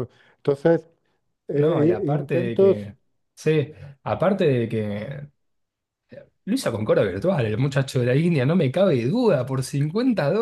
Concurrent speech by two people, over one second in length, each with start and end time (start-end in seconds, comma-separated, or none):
1.5-2.9